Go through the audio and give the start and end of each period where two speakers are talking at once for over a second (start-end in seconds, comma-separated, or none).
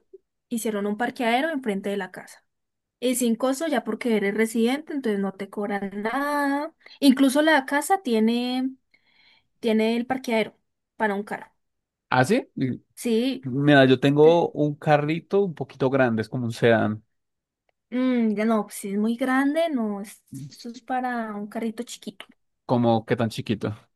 none